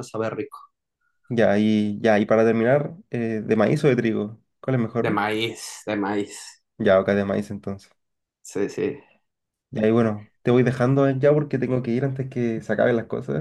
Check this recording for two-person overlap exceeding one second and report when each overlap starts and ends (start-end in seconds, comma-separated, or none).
none